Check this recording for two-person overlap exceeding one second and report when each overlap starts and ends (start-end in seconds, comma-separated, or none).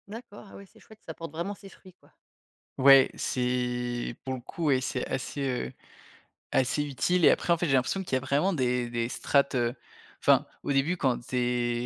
none